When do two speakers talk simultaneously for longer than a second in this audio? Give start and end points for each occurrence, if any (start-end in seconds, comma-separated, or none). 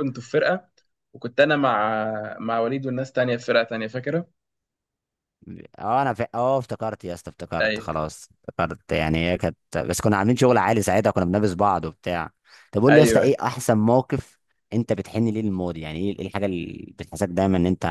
none